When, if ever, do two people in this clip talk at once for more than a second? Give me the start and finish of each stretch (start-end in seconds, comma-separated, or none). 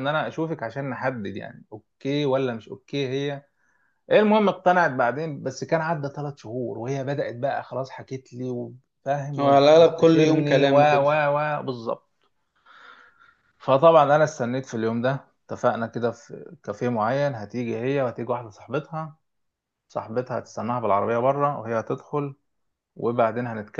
9.4-11.2